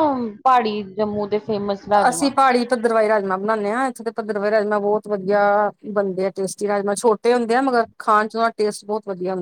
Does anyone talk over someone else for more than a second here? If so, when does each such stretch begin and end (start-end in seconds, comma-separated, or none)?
none